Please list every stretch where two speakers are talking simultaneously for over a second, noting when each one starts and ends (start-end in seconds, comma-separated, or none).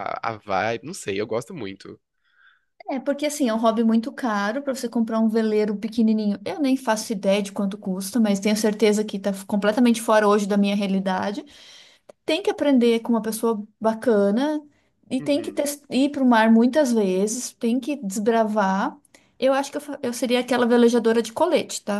none